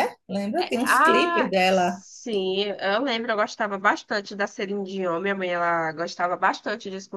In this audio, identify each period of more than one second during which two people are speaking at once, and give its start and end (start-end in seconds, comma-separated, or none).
0.6-2.0